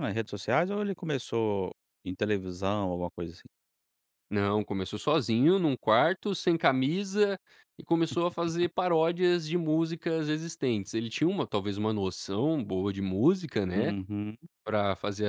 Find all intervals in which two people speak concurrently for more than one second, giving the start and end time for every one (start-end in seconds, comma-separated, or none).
none